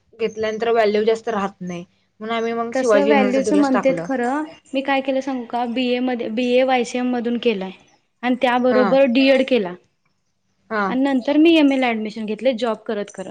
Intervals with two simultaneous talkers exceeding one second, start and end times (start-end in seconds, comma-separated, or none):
2.8-4.0